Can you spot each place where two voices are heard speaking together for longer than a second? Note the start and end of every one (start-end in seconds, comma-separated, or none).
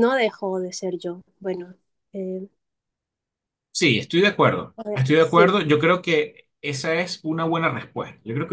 none